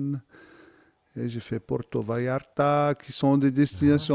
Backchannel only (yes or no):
yes